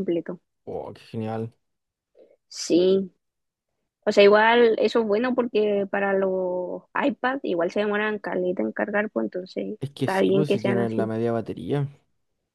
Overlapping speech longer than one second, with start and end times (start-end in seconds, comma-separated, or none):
9.8-11.1